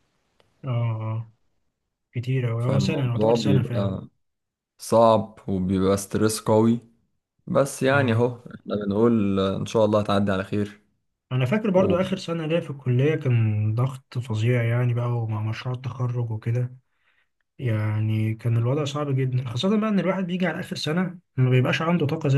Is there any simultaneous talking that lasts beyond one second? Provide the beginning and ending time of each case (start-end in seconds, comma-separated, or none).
2.6-4.0